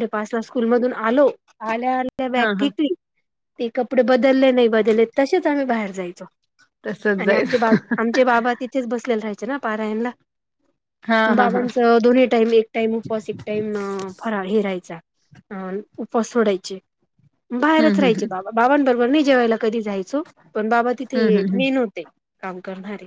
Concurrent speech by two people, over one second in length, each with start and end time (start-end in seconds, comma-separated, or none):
none